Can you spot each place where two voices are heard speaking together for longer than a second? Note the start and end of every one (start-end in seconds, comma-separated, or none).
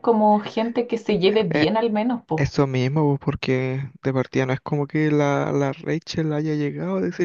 none